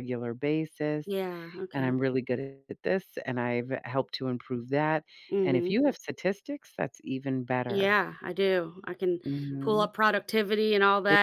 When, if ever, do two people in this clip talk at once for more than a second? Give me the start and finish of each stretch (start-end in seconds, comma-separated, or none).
none